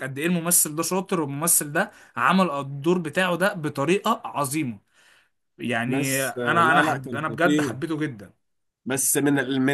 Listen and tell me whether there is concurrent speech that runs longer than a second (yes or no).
yes